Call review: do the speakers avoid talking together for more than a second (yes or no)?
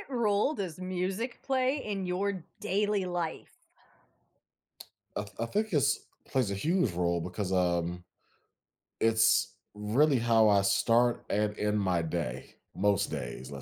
yes